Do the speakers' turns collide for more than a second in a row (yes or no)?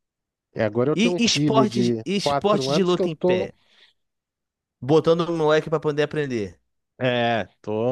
yes